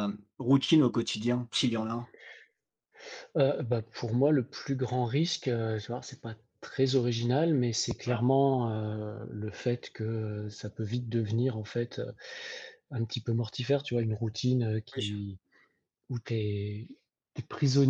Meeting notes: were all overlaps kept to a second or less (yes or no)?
yes